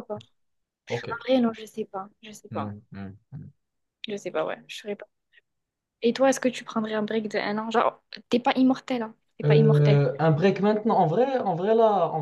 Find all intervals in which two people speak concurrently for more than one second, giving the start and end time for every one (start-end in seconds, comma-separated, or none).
none